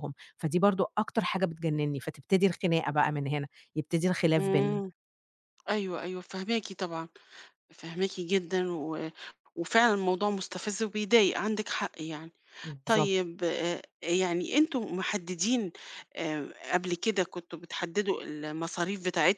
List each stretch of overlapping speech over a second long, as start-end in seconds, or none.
none